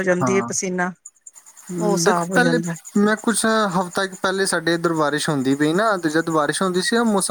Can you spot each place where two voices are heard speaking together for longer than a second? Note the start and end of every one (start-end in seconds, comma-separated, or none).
none